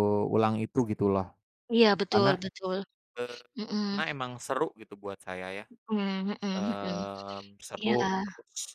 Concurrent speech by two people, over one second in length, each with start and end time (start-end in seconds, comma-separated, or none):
none